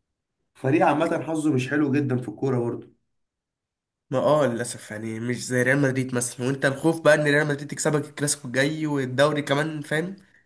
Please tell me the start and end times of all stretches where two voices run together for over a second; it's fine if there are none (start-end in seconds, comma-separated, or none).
none